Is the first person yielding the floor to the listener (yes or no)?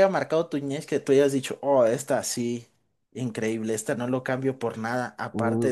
yes